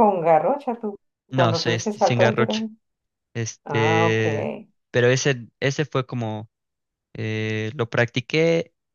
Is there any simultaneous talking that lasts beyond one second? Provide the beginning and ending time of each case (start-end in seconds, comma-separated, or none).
1.3-2.7